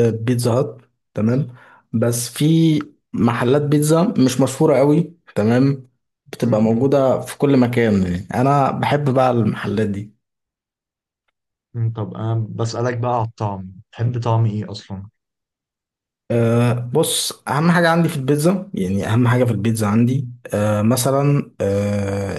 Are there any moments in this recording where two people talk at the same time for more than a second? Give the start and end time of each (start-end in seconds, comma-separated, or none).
none